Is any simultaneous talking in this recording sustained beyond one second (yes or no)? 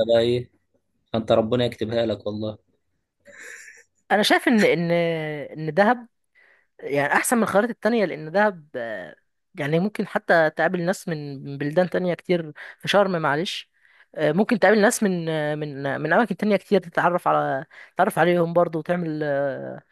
no